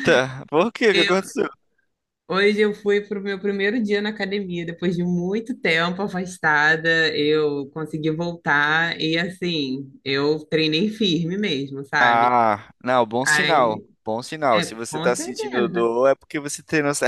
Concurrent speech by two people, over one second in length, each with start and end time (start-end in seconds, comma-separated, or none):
14.6-15.9